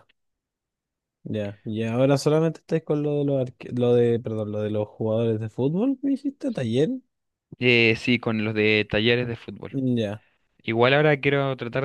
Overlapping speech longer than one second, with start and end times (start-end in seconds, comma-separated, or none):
none